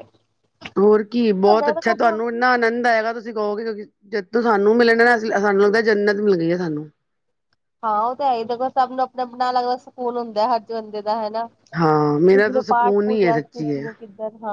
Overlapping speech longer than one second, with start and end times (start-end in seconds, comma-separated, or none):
11.8-13.8